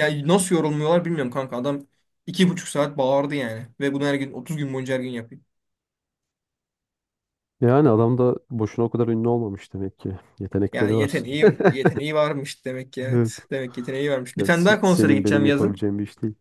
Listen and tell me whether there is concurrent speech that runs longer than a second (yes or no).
yes